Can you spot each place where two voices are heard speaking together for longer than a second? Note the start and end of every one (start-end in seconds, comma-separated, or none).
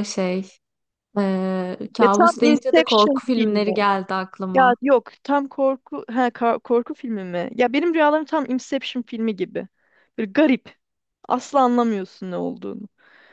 2.0-3.8